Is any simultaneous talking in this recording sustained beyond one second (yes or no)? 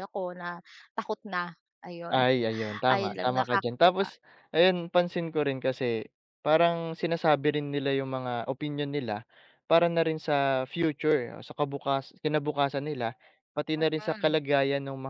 yes